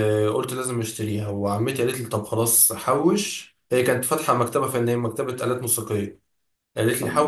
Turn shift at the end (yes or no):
no